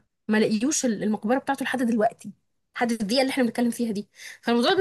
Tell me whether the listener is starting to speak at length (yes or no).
no